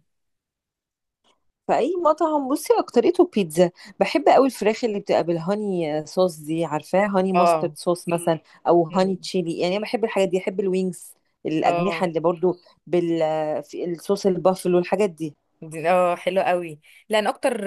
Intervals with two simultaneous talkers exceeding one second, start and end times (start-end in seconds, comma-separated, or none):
none